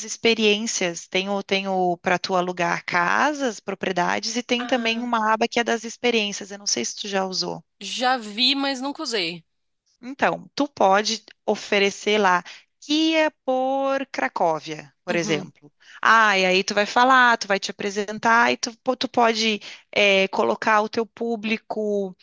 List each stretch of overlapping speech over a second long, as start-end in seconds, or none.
none